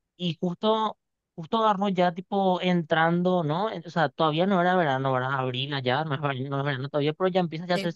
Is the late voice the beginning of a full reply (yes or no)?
no